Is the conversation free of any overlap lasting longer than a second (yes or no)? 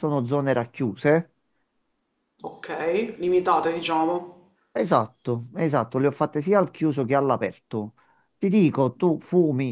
yes